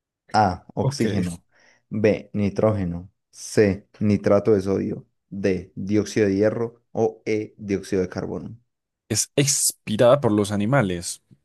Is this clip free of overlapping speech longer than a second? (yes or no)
yes